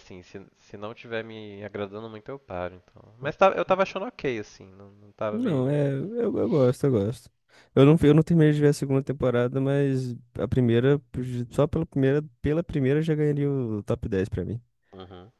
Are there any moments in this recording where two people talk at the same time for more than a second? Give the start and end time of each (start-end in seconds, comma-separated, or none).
none